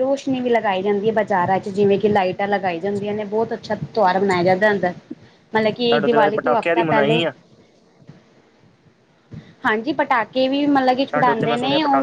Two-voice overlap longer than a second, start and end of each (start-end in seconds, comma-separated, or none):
5.9-7.2